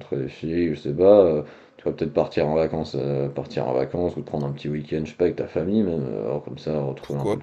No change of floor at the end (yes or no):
no